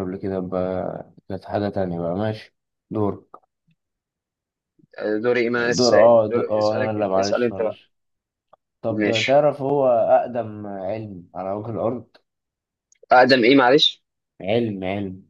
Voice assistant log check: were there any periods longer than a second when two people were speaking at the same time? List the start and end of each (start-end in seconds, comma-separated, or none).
5.8-7.8